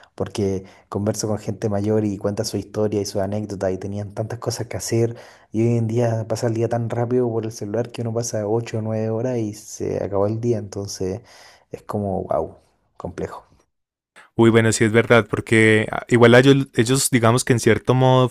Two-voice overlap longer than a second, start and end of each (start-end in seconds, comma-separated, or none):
none